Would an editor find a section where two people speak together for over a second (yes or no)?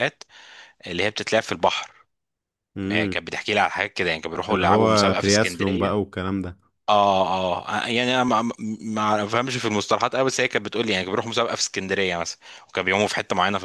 yes